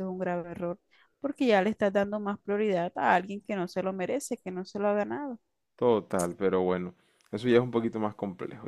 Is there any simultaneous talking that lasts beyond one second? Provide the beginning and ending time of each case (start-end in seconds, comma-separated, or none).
none